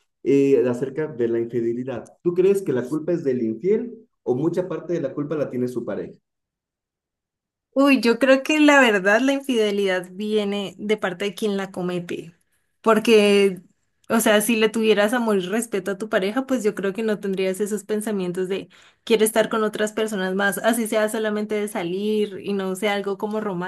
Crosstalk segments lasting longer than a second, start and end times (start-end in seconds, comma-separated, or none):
none